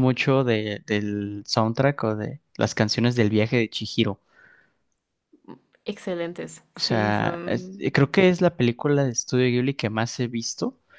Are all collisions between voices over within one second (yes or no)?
no